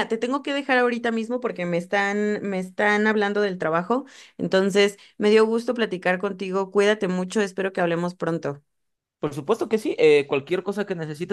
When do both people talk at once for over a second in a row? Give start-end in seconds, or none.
none